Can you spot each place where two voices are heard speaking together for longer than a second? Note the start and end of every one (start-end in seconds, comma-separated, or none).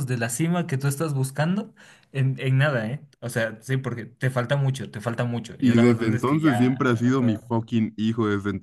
5.6-7.5